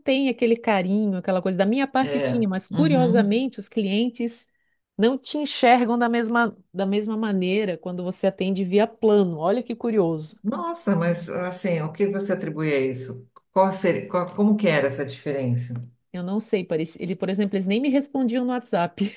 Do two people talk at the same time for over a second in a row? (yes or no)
yes